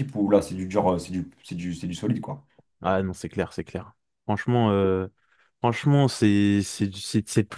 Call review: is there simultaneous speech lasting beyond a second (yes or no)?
no